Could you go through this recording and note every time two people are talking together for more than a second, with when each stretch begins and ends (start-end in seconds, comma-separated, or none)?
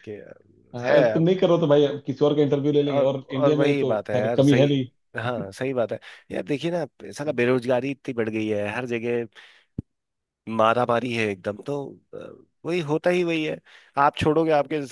2.9-4.7